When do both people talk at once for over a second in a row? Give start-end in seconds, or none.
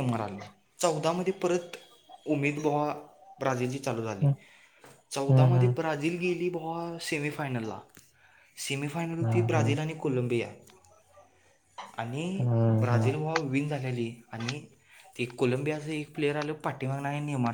none